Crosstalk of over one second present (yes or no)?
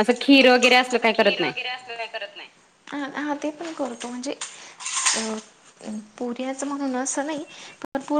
no